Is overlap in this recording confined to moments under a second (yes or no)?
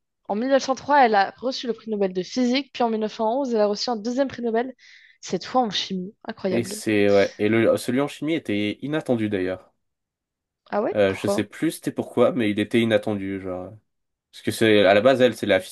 yes